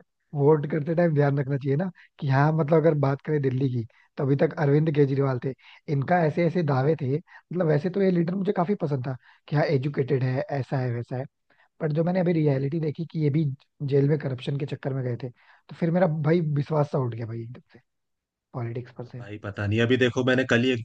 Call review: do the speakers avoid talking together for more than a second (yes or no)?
yes